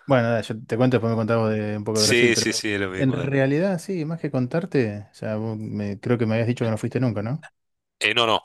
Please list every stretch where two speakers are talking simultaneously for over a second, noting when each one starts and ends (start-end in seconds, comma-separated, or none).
1.9-3.4